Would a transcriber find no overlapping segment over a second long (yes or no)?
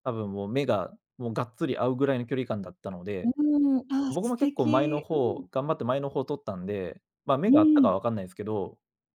no